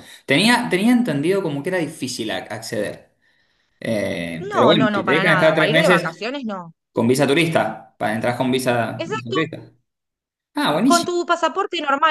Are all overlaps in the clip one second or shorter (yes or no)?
no